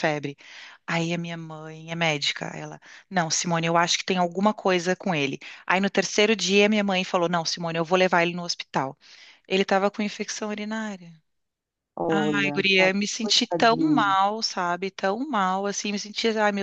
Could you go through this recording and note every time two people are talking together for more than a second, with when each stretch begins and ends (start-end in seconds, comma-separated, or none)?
12.1-14.2